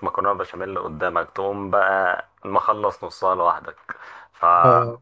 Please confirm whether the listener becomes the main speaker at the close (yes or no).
no